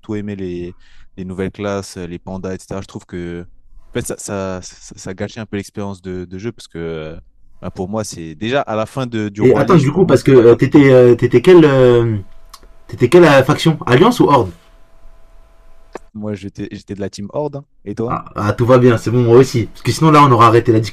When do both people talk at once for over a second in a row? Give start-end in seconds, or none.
9.4-10.8